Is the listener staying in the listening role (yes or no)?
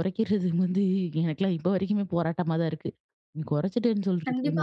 no